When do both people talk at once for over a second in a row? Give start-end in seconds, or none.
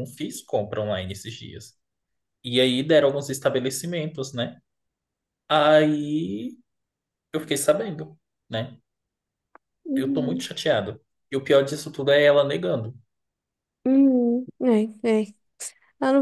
none